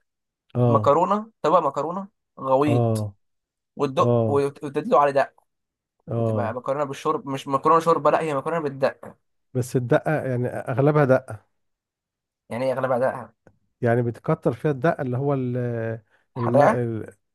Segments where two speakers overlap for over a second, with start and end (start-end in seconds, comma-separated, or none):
none